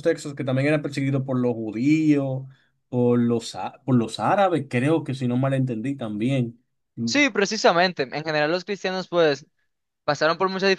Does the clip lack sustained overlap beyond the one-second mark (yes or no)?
yes